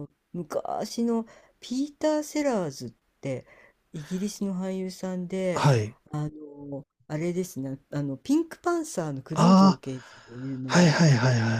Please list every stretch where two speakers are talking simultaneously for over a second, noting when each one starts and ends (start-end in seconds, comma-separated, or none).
none